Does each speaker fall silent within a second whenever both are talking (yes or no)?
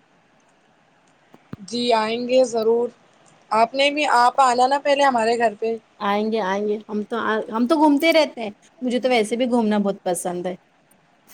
yes